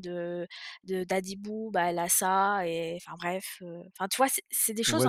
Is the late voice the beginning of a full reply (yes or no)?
yes